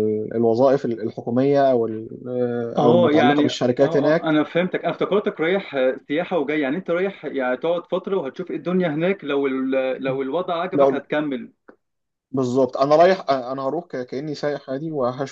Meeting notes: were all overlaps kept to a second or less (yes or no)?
no